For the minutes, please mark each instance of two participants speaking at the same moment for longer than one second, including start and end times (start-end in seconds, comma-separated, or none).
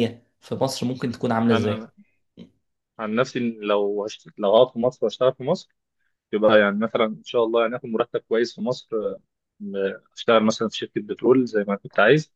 none